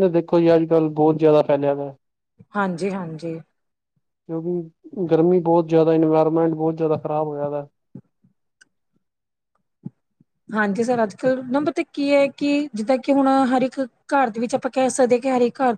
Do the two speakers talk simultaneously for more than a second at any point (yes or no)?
no